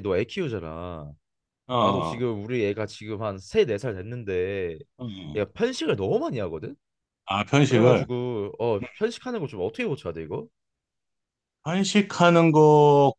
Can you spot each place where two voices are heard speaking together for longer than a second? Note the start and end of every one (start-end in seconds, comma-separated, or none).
none